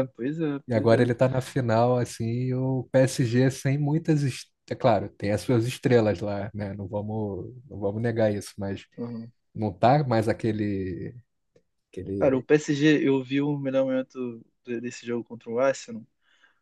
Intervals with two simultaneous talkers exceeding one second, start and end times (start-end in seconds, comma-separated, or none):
none